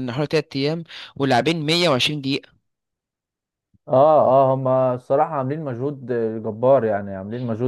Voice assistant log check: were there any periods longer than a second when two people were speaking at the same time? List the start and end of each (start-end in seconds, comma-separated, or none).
none